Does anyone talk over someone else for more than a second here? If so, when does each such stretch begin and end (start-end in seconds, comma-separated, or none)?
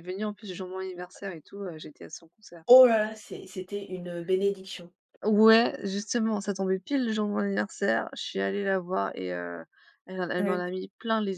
none